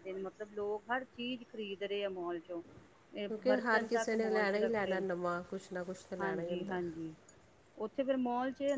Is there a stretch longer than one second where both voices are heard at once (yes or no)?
yes